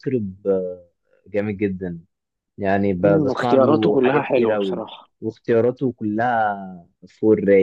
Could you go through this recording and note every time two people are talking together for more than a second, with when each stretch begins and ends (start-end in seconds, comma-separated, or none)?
3.0-4.8